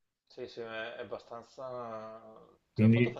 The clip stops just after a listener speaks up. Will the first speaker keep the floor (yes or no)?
yes